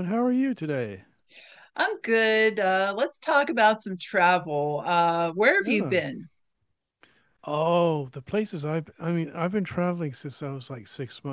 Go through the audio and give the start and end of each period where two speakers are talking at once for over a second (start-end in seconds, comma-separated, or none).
none